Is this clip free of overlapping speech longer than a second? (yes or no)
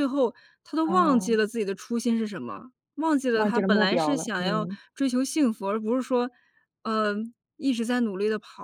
no